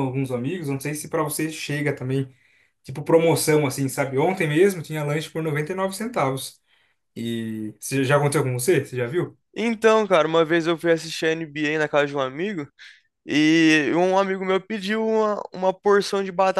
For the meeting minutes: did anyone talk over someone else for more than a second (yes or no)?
no